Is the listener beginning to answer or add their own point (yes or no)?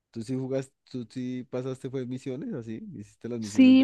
yes